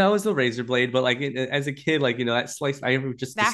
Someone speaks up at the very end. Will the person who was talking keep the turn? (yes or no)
yes